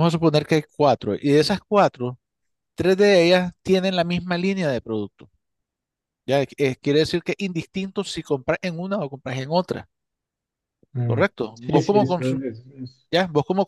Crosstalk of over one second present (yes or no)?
yes